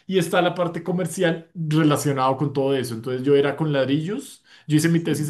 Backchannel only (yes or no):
yes